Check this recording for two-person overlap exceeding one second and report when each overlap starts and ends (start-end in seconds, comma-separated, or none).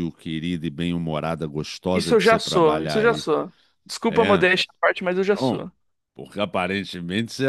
1.9-3.2